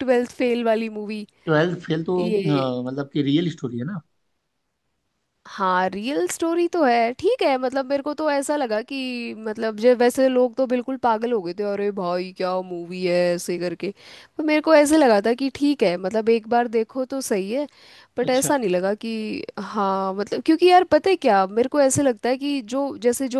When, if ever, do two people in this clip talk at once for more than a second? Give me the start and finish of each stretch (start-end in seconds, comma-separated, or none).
none